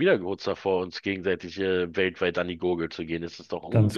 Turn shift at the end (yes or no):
yes